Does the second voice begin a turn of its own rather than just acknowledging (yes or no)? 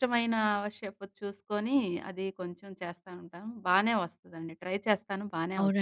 yes